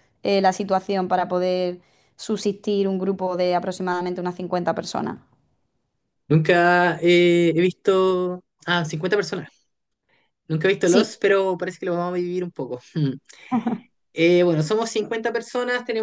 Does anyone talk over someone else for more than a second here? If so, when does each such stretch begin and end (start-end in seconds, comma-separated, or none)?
none